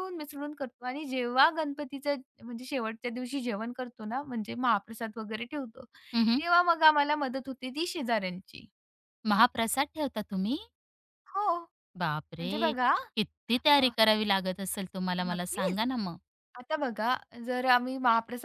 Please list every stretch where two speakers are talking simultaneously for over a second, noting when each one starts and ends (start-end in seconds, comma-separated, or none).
none